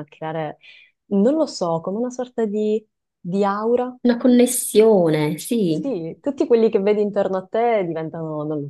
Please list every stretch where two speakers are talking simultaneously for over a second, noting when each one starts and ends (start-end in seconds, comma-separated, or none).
none